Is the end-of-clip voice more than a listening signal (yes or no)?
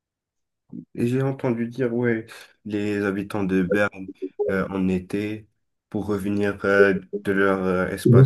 no